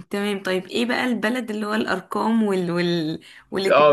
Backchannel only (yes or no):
no